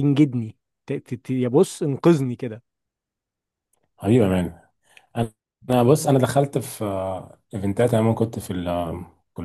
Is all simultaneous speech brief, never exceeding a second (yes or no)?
yes